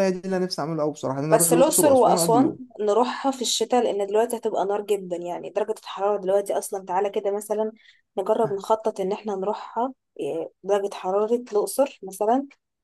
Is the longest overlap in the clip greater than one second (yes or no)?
yes